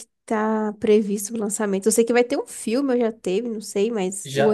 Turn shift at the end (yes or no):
yes